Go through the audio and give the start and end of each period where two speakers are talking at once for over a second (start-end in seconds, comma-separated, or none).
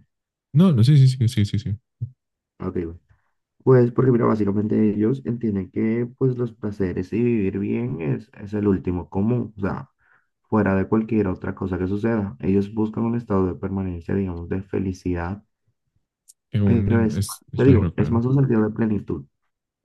16.6-18.2